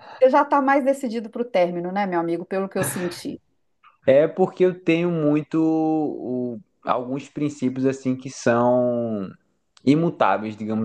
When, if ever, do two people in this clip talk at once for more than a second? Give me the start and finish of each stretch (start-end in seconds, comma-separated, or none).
none